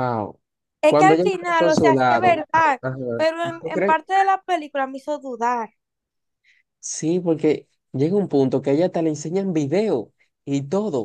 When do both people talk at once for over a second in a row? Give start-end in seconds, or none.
0.9-2.4